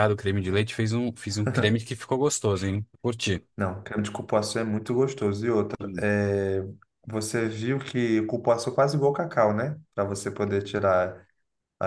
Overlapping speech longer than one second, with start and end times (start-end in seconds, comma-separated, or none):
none